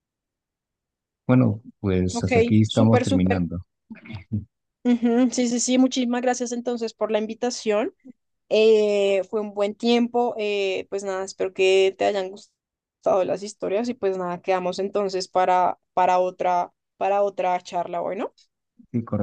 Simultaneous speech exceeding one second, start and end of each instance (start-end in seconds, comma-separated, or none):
2.1-3.5